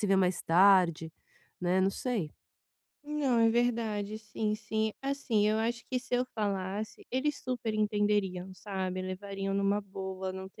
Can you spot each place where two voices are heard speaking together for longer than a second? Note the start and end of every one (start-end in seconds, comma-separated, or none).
none